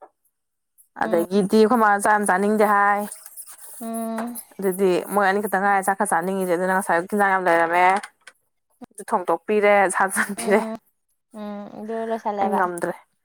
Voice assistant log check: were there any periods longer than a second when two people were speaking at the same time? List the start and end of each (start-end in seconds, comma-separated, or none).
none